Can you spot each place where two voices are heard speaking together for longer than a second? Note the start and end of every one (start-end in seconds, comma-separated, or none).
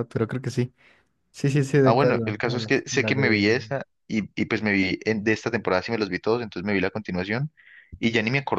1.8-3.5